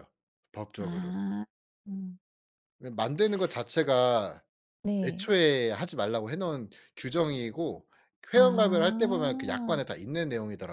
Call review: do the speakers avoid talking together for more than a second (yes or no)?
no